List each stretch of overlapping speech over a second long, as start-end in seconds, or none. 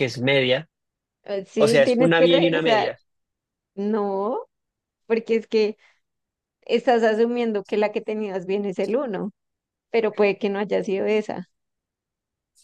1.6-2.9